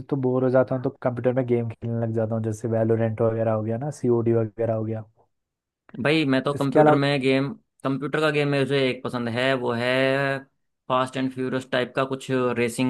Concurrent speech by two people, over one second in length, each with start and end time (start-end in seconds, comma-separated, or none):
none